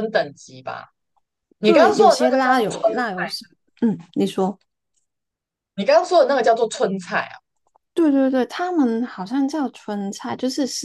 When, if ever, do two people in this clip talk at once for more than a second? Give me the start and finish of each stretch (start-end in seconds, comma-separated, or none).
1.6-3.2